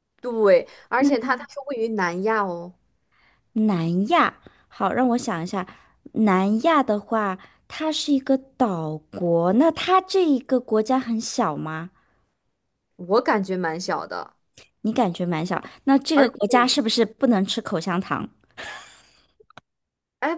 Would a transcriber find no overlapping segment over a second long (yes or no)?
yes